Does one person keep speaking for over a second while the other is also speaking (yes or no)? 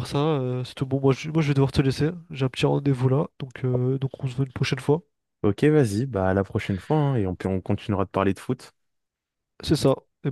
no